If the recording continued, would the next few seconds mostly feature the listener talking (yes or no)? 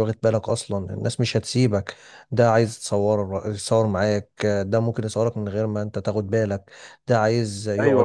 yes